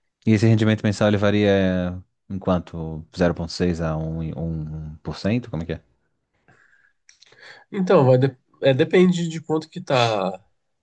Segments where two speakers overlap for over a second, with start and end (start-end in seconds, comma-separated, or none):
none